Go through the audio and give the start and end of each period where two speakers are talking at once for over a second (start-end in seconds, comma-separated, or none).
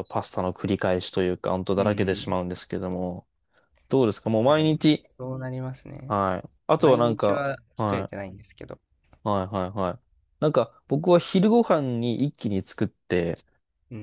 6.8-8.1